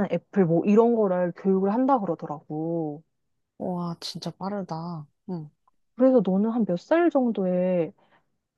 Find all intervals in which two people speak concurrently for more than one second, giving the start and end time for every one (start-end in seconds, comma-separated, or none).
none